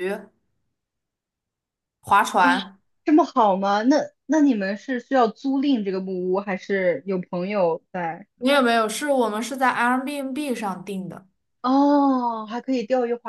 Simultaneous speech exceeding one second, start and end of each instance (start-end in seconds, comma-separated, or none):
none